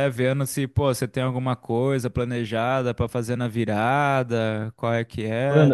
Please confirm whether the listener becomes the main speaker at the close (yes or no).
yes